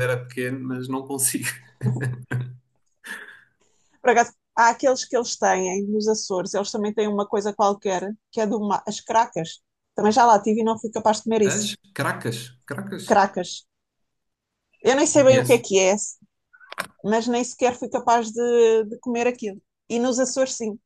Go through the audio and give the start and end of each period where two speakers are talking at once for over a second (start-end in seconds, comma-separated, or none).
none